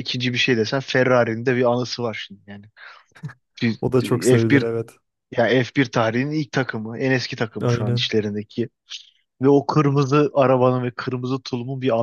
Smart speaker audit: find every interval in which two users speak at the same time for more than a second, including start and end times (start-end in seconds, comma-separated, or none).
none